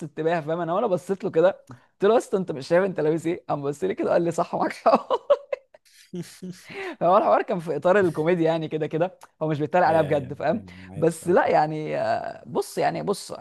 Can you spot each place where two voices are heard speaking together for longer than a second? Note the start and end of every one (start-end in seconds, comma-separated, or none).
9.9-11.5